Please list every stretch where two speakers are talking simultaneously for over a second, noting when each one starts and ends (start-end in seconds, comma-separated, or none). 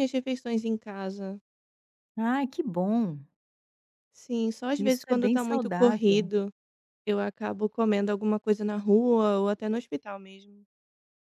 4.8-6.3